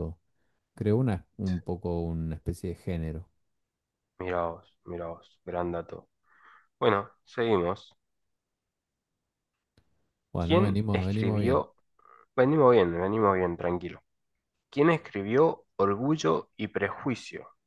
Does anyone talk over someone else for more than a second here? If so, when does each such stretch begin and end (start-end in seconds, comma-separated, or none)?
10.4-11.6